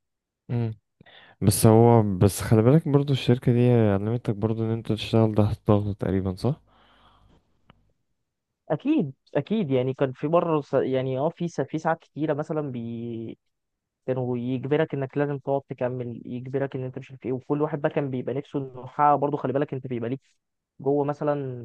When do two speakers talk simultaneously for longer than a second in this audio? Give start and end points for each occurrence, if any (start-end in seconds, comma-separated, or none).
none